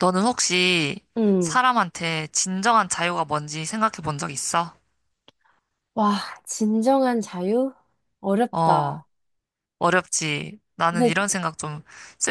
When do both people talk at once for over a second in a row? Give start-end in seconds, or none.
none